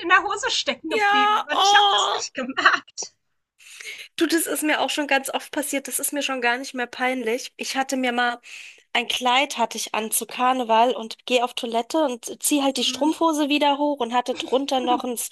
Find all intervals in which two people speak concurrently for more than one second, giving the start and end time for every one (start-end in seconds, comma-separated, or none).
0.9-2.3